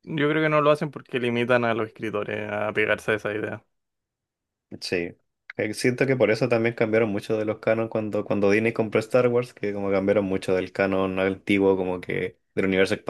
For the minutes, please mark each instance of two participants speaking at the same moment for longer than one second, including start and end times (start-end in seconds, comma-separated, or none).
none